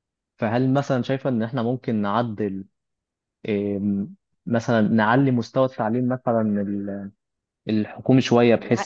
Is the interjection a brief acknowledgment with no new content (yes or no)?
yes